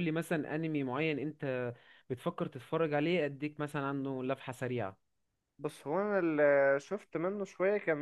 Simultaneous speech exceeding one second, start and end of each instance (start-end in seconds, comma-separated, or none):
none